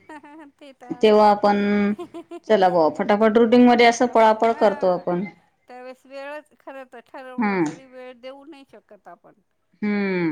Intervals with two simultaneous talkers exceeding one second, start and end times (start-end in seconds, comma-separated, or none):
3.0-5.0